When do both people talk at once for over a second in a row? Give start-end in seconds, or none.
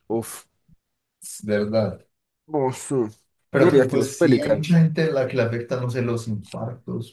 3.5-4.8